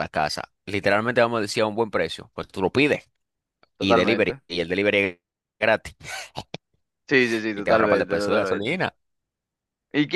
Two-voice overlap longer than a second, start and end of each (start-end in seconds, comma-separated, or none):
7.5-8.8